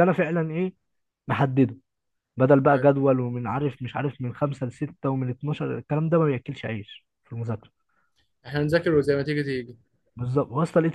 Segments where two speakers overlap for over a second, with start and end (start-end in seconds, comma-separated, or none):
none